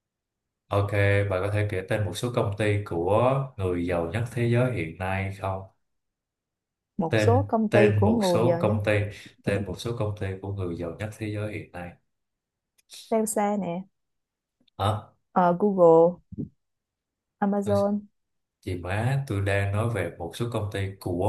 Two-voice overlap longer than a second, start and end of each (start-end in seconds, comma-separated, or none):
7.1-8.8